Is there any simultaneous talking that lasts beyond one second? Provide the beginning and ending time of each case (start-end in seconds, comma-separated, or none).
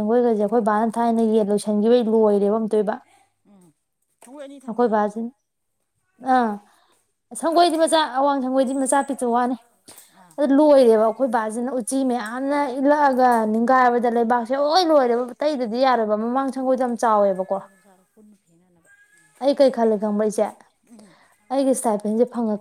none